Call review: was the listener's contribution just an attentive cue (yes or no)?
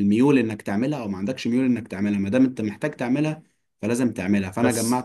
no